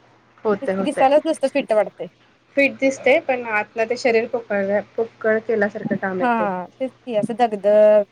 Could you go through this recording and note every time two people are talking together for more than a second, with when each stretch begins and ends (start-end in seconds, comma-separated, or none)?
none